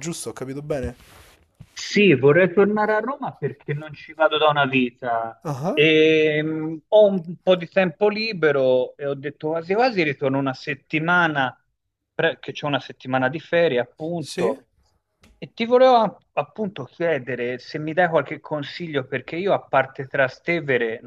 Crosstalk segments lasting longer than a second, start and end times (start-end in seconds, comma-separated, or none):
none